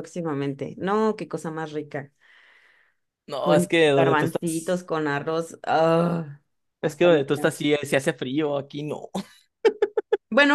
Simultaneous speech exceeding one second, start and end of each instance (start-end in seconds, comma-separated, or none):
3.4-4.8